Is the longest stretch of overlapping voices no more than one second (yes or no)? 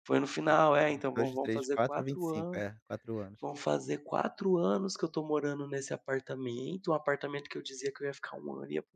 no